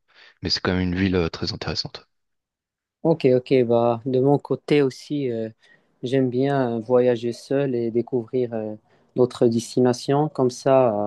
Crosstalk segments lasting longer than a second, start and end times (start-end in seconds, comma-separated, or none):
none